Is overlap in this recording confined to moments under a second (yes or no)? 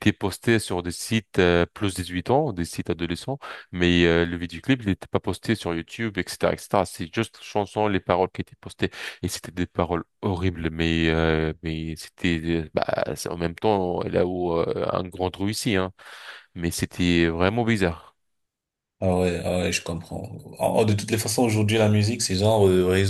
yes